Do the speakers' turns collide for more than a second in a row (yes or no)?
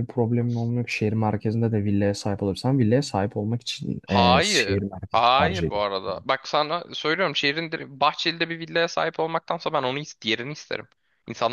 yes